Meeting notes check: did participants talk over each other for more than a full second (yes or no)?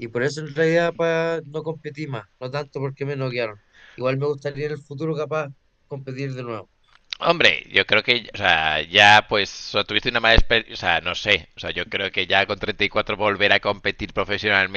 no